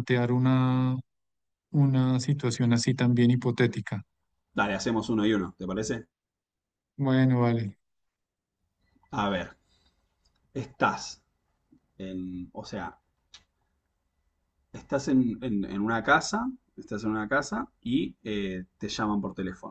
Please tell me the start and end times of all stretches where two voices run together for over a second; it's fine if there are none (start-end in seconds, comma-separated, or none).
none